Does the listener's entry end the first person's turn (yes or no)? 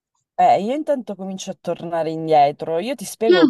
no